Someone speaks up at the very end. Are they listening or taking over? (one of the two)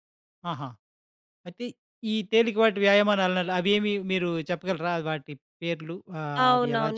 taking over